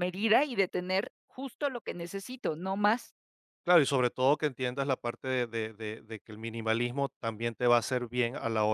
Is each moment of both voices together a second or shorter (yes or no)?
yes